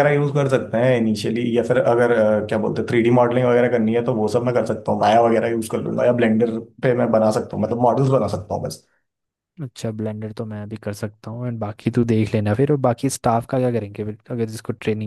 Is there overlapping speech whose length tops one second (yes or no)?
no